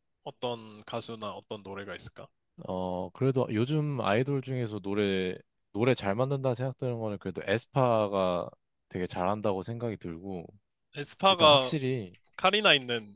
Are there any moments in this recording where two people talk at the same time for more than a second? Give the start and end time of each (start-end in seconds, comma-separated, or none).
none